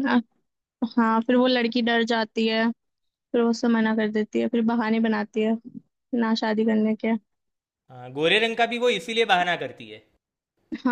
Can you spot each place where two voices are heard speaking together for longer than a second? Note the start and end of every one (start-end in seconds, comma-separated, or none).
none